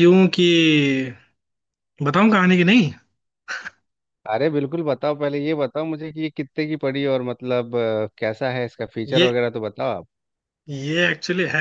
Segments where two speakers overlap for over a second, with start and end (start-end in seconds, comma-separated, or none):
none